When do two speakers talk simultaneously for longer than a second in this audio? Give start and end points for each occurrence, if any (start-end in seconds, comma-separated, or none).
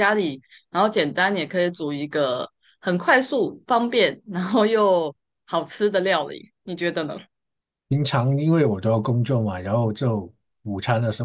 none